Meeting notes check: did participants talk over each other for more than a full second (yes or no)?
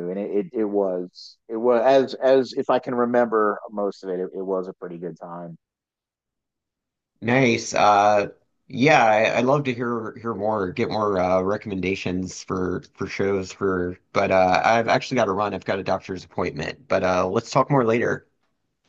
no